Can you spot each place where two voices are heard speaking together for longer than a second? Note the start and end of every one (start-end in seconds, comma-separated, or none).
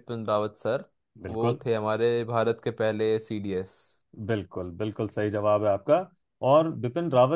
none